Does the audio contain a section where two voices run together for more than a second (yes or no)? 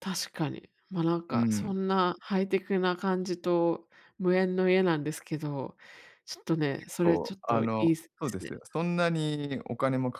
yes